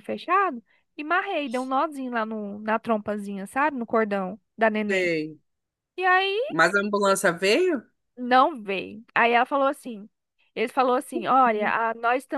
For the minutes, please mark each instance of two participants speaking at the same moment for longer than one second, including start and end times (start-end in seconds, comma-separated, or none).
none